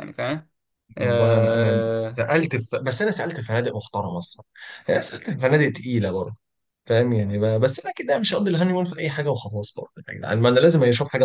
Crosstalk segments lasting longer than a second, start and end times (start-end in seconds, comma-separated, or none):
1.0-2.2